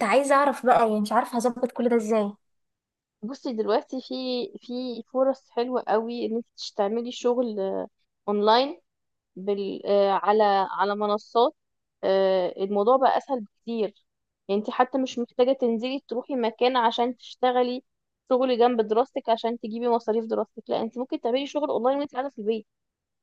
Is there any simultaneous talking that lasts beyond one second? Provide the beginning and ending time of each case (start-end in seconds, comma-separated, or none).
none